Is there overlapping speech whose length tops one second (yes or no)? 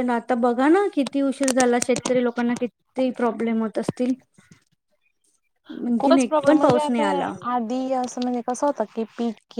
yes